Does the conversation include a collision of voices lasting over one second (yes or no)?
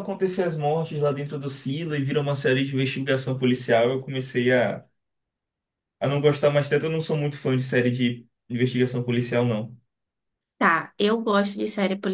no